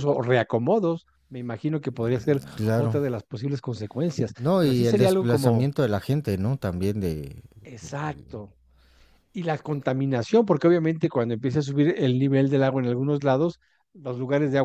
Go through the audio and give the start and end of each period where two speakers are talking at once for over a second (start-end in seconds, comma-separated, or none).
4.4-5.7